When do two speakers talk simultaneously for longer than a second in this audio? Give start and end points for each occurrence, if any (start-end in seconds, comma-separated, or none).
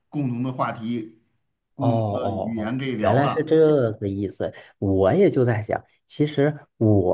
1.8-3.5